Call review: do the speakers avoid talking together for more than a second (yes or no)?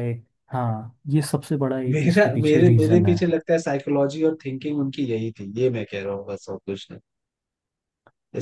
no